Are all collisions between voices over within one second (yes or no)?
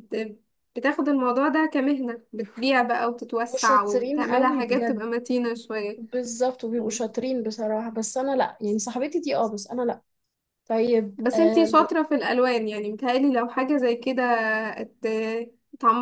no